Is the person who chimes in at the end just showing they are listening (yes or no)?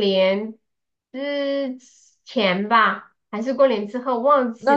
no